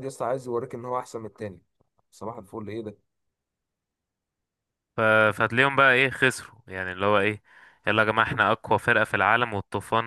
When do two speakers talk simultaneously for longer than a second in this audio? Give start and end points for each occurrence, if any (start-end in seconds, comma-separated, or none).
none